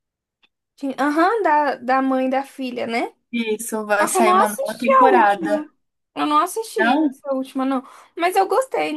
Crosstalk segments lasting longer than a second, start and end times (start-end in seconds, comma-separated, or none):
4.0-5.7